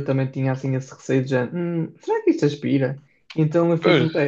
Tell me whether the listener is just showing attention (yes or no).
yes